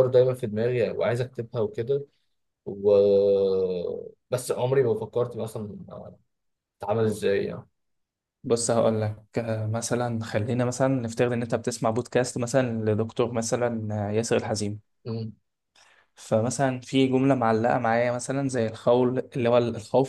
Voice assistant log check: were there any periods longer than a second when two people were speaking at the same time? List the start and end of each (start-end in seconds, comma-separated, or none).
none